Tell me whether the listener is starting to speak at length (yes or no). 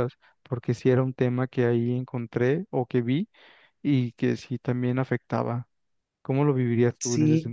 yes